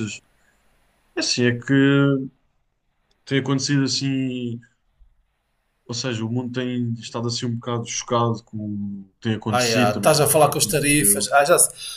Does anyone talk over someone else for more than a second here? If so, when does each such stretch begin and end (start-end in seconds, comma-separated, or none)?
9.5-11.3